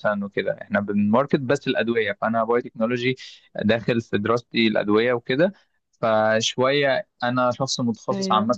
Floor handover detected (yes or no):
no